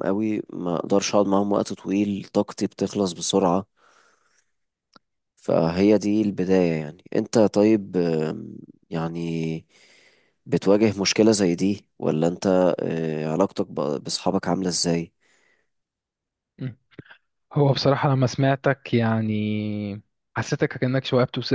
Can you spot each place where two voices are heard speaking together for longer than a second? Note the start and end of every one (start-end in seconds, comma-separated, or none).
none